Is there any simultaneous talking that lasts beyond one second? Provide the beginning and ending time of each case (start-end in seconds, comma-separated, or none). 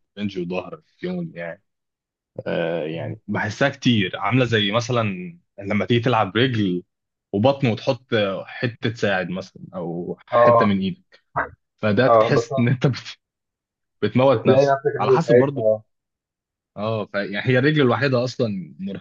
14.3-15.7